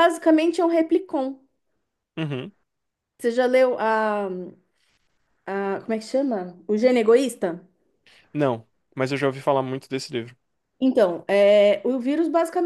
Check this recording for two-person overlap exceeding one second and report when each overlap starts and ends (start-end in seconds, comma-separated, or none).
none